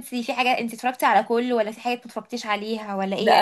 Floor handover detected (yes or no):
yes